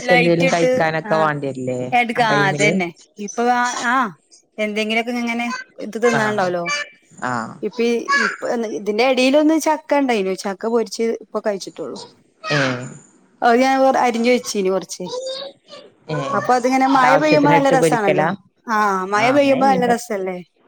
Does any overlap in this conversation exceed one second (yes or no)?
yes